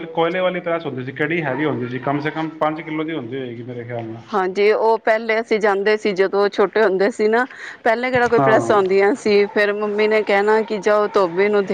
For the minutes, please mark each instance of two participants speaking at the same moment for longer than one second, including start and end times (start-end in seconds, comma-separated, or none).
none